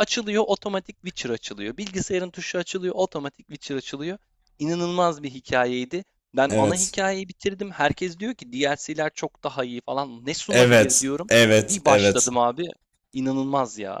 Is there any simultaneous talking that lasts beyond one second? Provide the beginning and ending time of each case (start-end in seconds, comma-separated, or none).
10.5-12.3